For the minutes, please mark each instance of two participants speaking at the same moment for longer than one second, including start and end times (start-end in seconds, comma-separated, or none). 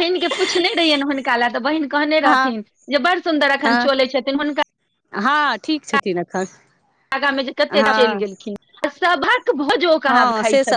none